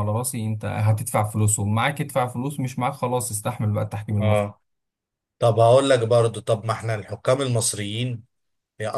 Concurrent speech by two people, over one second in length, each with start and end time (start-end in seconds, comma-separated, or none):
none